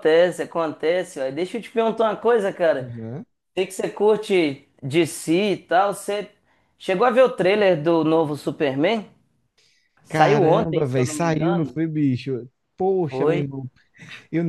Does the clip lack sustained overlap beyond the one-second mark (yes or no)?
no